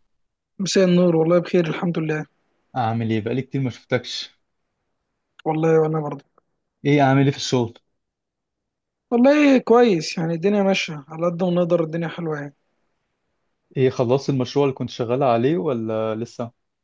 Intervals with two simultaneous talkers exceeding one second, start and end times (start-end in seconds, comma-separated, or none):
none